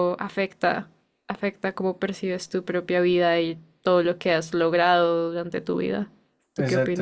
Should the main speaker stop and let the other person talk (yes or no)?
yes